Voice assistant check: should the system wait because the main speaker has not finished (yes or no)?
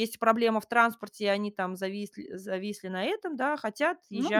yes